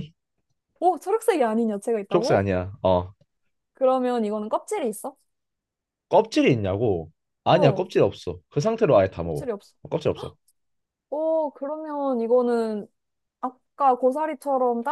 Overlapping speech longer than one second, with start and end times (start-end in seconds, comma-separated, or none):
none